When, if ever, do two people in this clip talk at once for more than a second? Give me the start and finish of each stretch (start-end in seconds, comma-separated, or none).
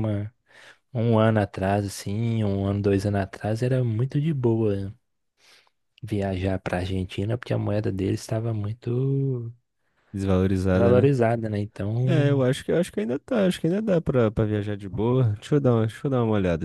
none